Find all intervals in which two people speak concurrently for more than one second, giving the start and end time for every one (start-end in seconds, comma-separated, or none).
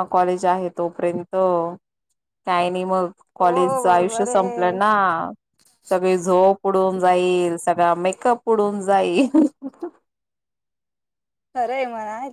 3.4-4.8